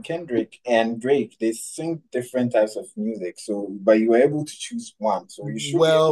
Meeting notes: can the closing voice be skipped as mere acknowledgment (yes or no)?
no